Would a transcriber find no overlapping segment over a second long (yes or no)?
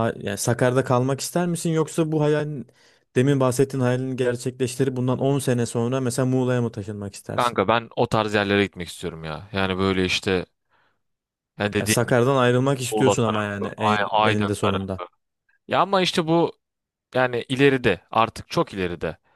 no